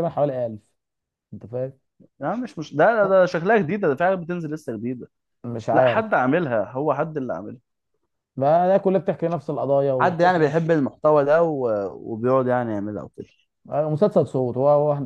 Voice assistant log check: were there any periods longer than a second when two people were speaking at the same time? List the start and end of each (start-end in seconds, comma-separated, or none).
none